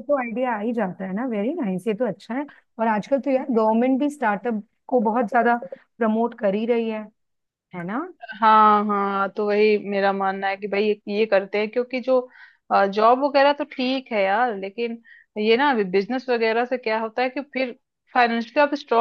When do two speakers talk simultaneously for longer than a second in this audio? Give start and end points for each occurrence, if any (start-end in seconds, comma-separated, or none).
none